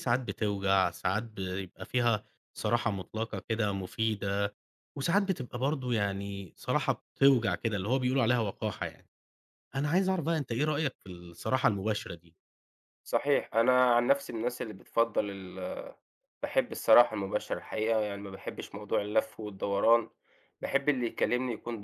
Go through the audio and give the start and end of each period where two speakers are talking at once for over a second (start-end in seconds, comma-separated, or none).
none